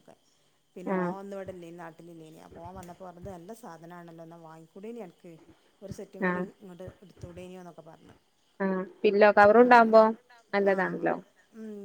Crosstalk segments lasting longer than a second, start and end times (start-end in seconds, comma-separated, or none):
none